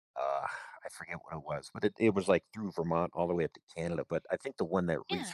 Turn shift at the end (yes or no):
no